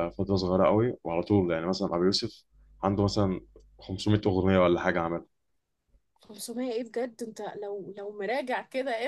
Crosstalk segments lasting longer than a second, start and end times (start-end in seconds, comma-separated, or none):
none